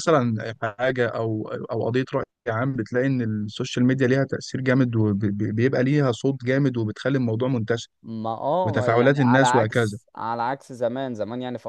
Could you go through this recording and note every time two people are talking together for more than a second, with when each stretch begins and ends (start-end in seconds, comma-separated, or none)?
8.6-10.0